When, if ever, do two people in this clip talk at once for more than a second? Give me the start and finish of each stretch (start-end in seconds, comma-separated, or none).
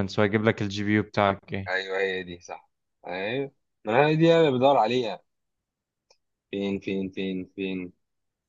none